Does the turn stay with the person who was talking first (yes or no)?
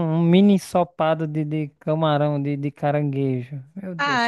no